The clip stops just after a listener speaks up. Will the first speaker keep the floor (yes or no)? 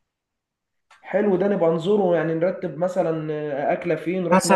no